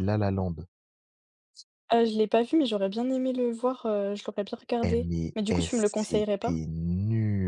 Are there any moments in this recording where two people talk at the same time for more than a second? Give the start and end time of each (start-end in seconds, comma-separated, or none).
4.8-6.5